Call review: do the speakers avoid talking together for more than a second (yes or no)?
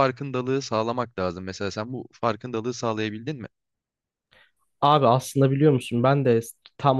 yes